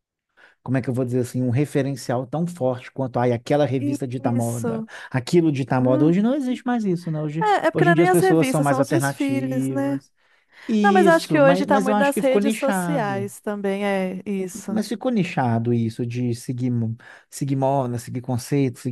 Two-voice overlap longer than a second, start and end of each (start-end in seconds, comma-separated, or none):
7.4-10.0, 10.8-13.3